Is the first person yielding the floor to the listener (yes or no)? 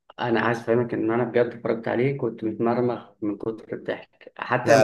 no